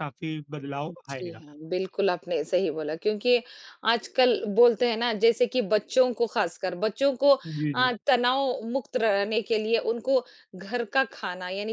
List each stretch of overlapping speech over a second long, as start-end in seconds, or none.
none